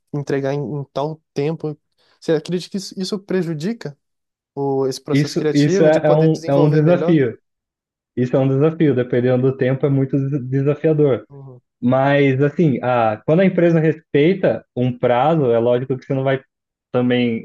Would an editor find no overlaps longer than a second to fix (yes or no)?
no